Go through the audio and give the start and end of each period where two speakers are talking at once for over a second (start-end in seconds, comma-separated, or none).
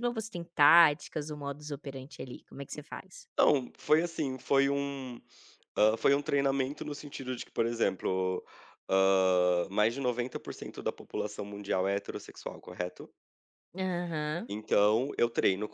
none